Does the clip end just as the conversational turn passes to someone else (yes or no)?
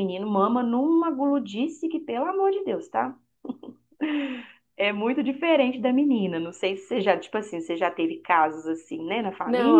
yes